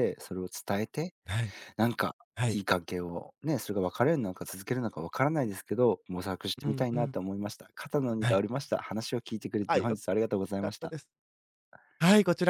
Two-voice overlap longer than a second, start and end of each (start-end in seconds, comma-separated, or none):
none